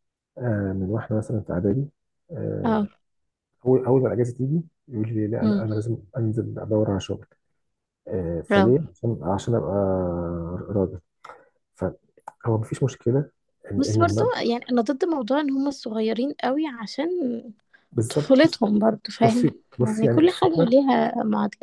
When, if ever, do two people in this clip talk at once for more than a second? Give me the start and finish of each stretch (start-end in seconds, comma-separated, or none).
19.2-20.8